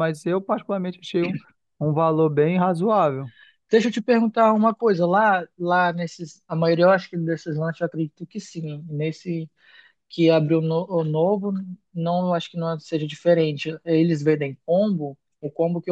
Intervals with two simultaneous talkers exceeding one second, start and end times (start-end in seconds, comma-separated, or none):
none